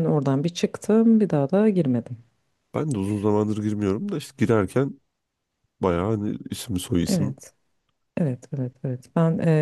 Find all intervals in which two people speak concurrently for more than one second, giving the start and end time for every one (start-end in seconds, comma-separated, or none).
none